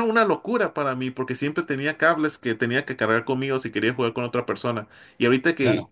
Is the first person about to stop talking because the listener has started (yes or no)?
no